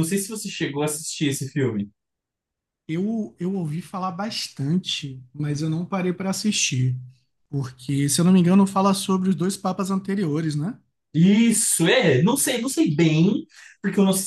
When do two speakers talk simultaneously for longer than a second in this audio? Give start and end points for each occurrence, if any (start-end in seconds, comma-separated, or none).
none